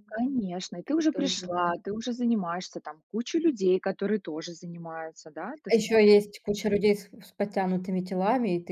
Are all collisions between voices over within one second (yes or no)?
yes